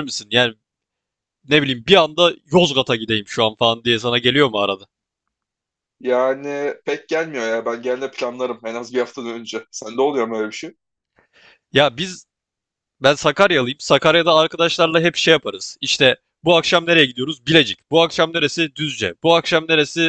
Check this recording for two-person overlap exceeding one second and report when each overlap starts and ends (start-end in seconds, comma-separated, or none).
none